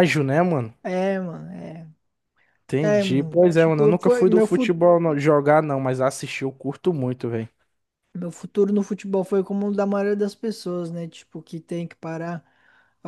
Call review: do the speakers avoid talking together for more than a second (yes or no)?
no